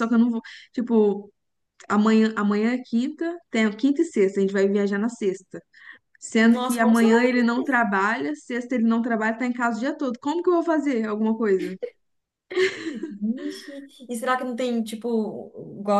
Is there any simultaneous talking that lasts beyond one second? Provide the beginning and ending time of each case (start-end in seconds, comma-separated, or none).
6.4-7.9